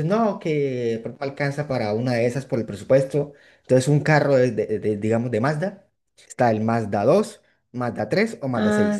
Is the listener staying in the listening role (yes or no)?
no